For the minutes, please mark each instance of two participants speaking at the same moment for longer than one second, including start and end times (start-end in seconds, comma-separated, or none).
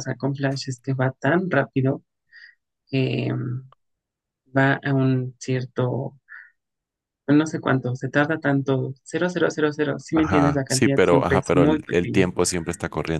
10.1-12.2